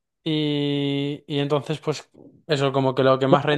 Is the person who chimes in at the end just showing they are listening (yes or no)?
no